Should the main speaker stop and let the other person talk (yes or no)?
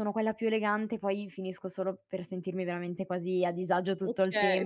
yes